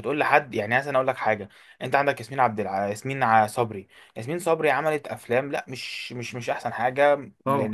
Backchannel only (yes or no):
no